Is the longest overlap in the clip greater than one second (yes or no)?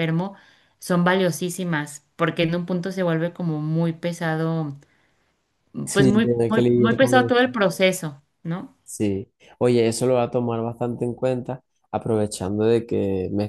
yes